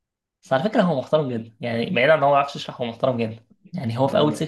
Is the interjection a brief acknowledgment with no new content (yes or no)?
yes